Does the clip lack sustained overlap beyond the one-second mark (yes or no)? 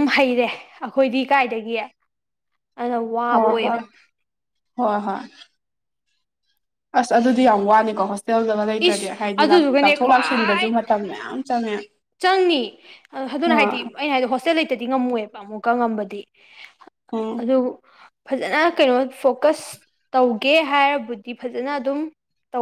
no